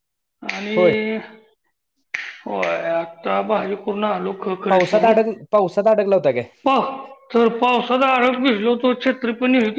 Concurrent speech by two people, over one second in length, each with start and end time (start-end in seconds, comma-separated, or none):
none